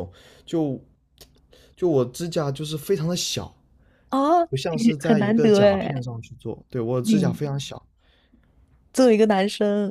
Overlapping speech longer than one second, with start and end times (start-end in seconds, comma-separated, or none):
4.5-6.0